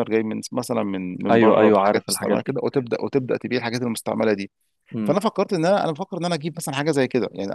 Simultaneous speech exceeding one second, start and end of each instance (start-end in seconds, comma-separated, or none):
1.3-2.6